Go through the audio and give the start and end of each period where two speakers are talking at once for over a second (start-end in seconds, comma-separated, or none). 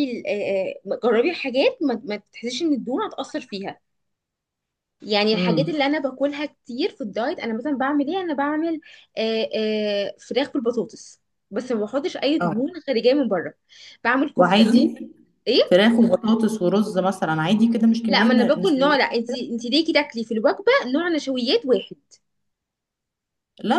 18.1-19.4